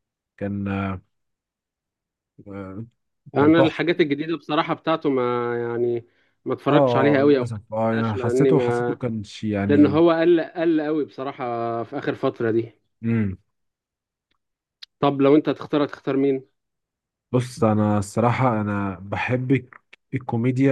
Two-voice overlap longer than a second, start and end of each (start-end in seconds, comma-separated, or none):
6.7-9.0